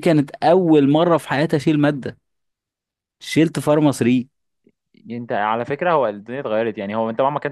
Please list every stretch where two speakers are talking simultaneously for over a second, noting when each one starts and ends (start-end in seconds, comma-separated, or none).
none